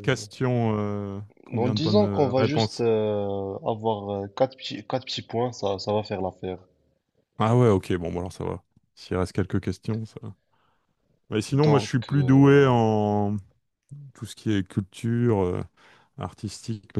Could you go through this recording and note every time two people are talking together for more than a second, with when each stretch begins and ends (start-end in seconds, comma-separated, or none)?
1.6-2.9, 11.5-12.8